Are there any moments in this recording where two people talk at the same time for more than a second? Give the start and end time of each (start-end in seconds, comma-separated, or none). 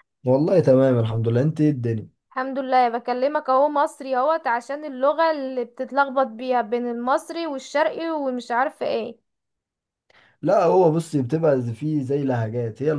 none